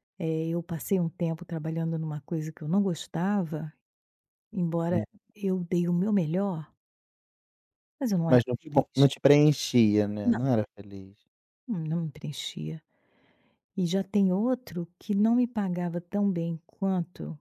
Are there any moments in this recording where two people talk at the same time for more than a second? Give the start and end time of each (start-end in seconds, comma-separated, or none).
none